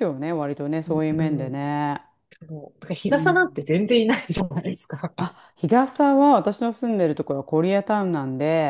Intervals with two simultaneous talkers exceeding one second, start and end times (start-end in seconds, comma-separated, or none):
none